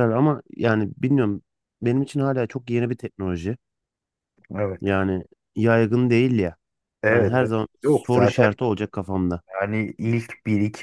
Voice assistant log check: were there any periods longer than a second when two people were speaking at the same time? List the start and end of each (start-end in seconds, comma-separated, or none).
7.1-8.5